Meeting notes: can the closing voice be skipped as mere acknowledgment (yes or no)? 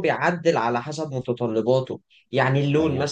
yes